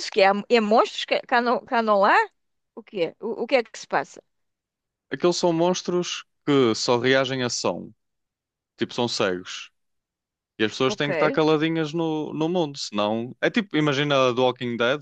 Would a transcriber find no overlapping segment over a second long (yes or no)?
yes